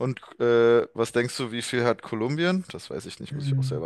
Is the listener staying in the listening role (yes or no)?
no